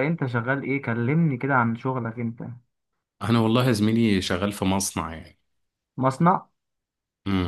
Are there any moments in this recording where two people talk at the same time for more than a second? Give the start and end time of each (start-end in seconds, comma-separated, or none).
none